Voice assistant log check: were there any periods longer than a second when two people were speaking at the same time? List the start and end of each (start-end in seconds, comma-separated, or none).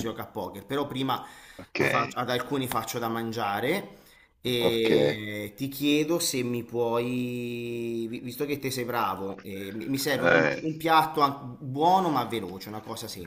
none